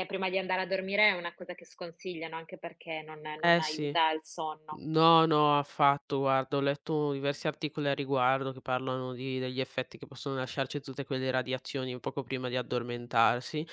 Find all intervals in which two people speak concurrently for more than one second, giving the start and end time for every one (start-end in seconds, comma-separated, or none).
none